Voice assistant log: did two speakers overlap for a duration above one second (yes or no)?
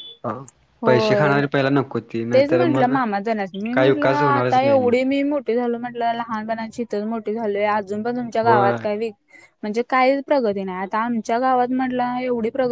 yes